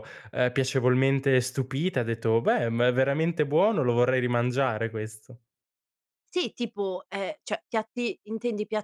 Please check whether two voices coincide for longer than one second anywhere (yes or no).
no